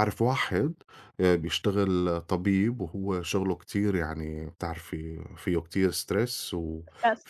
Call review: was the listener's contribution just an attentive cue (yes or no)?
yes